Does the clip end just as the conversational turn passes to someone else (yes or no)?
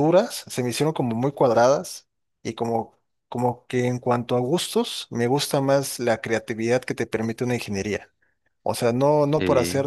no